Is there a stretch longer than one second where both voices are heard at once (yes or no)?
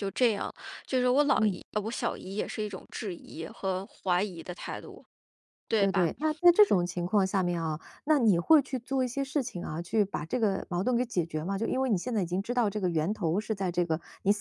no